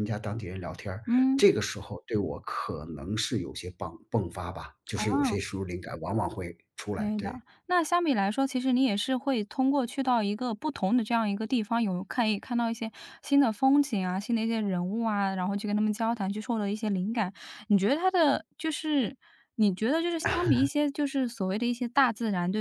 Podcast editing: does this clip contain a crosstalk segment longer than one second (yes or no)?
no